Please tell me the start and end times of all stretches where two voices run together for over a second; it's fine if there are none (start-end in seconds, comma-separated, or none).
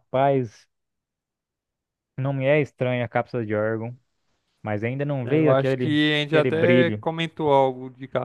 5.2-7.0